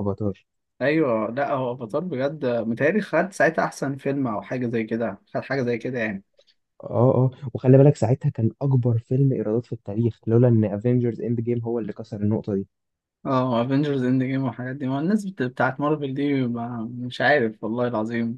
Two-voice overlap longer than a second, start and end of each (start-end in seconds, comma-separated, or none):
none